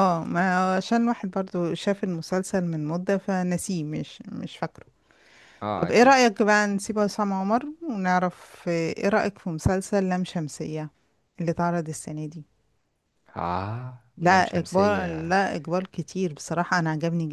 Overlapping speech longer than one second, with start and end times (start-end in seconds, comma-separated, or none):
14.2-15.4